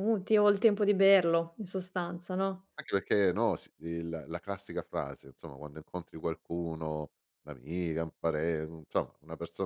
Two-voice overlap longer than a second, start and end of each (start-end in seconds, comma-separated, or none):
none